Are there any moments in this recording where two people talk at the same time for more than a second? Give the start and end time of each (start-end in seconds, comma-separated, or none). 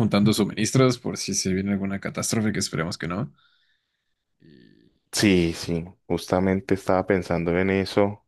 none